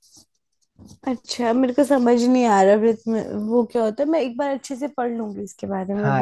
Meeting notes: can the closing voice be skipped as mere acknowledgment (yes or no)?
no